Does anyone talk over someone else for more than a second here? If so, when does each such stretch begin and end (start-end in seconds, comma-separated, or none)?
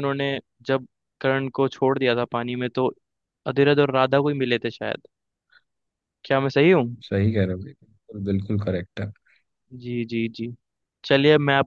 none